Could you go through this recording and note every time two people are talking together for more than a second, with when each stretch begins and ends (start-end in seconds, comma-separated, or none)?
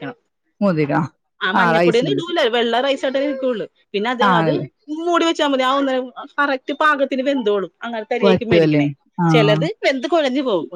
none